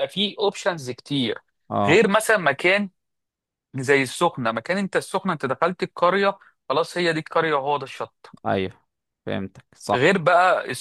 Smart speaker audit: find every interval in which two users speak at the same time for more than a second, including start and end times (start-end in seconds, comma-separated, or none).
none